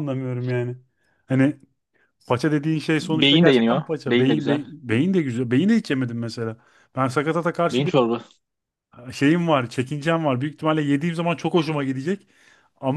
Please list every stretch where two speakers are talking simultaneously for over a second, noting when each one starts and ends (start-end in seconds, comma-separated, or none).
3.0-4.6